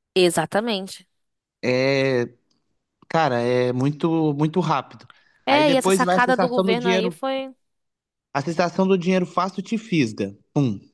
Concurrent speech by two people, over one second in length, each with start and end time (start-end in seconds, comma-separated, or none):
5.5-7.2